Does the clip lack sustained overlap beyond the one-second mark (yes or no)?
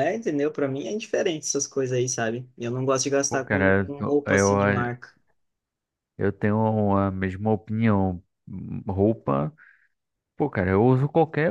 no